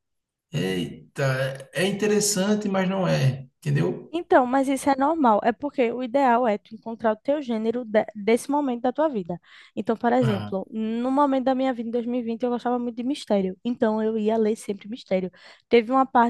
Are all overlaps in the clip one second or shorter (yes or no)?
yes